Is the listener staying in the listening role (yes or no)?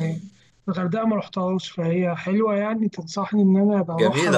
no